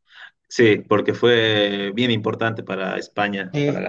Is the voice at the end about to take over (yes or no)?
yes